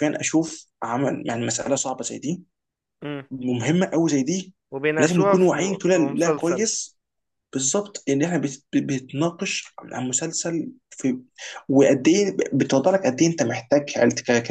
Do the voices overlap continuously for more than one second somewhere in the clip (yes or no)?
yes